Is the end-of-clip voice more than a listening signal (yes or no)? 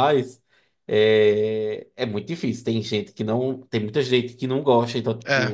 no